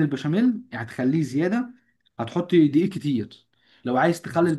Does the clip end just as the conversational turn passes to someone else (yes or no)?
no